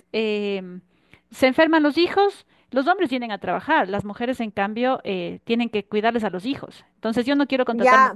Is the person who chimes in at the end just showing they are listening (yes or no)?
no